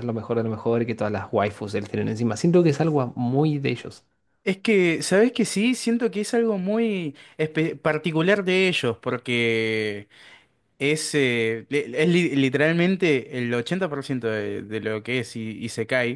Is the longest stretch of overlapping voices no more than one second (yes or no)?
yes